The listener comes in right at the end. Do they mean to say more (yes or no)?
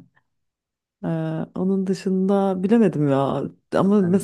no